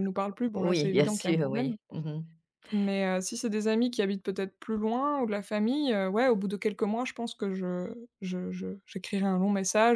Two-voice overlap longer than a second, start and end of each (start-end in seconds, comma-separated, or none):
0.6-1.8